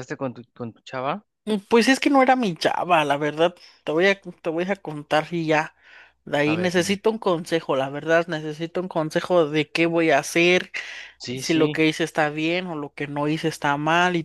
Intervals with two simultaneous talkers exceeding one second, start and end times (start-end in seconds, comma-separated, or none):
none